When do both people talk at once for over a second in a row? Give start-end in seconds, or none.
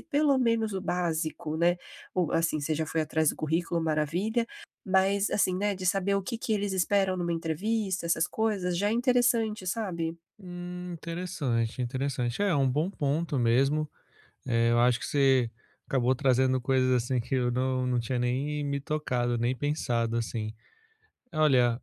none